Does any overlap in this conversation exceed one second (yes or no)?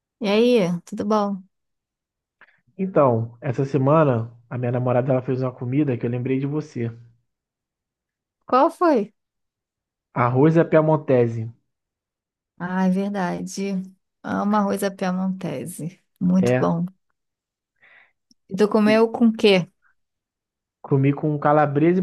no